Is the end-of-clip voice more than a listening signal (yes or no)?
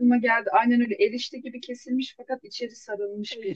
yes